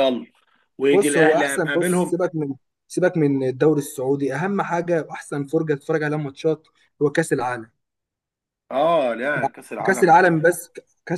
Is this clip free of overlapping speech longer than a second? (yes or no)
no